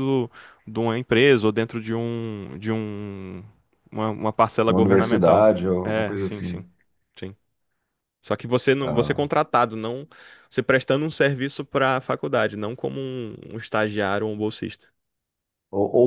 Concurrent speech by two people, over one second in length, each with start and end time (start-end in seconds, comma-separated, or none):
4.7-6.6